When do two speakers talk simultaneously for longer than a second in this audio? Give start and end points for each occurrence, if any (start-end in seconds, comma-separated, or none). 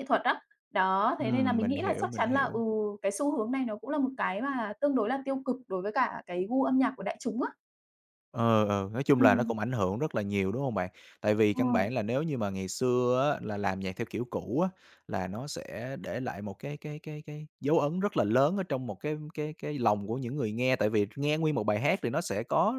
1.2-2.6